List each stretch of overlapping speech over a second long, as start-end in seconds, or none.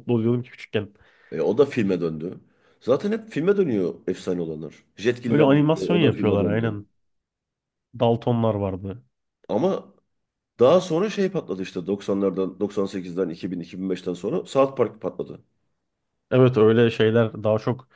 5.3-6.8